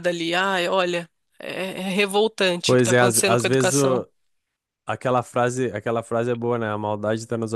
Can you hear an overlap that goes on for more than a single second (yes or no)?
yes